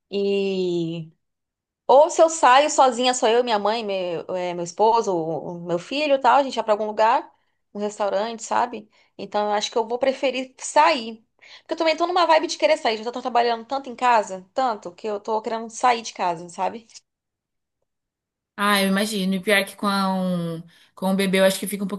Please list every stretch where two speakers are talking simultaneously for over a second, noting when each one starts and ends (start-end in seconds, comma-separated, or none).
none